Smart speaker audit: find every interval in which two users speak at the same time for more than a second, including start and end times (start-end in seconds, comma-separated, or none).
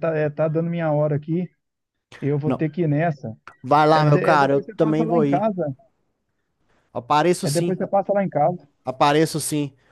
3.9-5.5